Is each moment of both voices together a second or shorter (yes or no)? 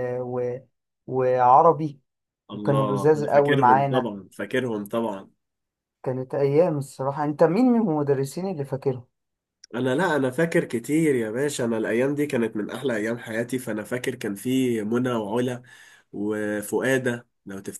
no